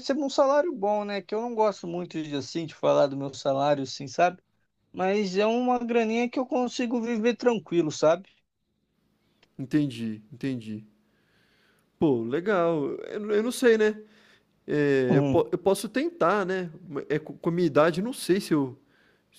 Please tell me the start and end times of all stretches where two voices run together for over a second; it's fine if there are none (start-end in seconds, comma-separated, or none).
none